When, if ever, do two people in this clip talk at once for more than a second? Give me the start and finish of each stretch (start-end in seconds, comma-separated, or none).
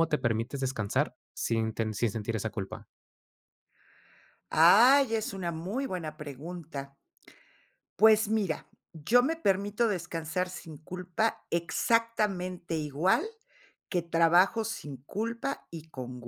none